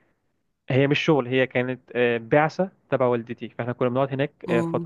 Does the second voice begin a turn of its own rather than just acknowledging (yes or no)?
no